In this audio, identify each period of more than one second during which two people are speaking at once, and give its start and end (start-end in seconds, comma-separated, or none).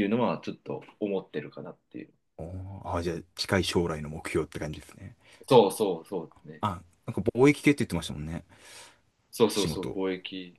none